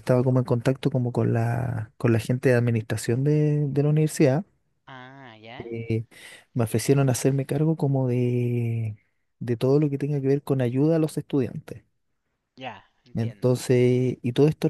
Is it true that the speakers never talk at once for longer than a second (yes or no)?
yes